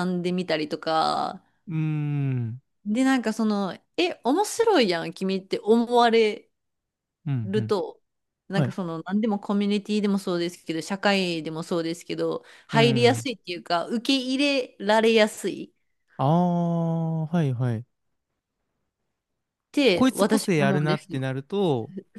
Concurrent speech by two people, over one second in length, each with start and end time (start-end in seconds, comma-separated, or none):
19.9-21.2